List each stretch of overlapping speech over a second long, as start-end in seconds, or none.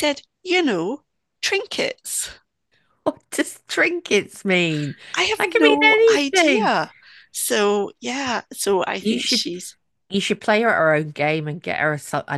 5.4-6.7